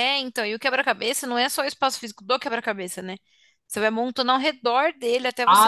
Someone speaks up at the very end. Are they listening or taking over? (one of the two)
taking over